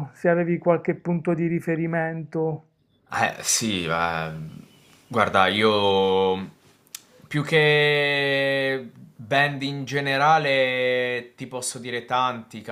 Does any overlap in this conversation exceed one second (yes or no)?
no